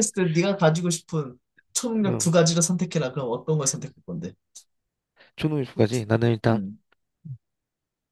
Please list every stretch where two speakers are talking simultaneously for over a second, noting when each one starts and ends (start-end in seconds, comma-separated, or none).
none